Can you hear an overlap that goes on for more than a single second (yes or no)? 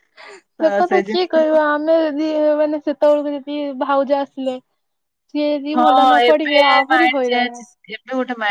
yes